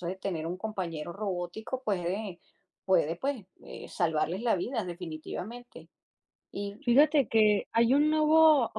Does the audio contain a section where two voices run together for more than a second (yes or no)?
no